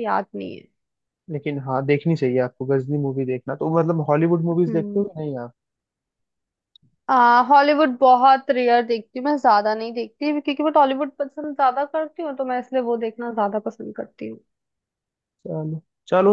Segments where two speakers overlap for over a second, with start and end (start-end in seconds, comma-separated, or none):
none